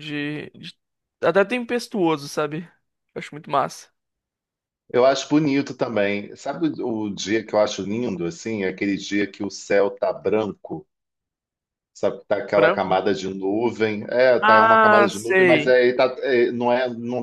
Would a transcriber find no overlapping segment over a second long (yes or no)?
no